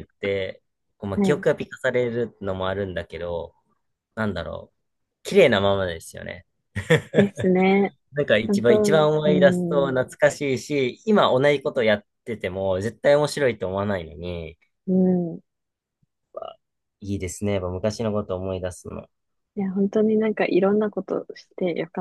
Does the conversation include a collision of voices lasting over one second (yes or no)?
yes